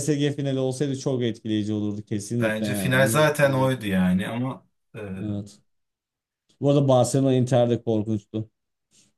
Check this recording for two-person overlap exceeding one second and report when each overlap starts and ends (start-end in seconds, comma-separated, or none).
2.4-3.7